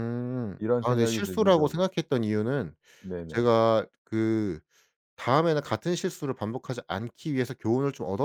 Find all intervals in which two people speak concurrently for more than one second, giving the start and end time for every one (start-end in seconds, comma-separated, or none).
0.6-1.9